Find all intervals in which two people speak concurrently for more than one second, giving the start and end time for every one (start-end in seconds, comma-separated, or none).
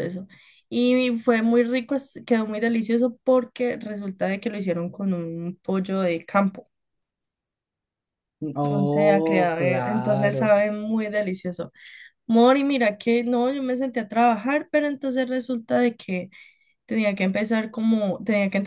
8.7-10.6